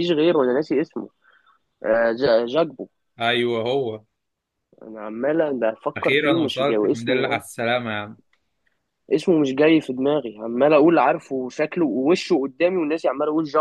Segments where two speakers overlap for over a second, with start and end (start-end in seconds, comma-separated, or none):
6.0-7.4